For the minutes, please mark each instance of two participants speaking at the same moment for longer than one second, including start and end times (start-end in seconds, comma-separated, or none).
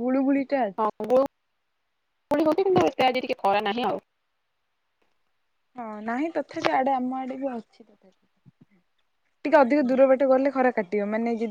none